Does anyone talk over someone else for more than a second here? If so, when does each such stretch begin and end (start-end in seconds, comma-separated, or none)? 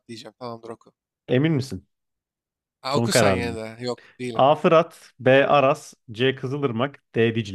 none